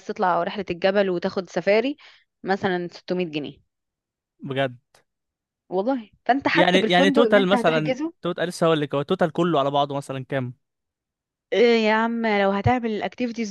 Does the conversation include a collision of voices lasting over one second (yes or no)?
yes